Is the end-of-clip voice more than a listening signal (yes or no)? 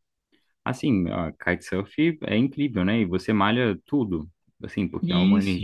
no